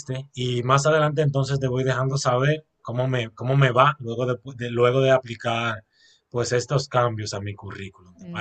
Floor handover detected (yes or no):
yes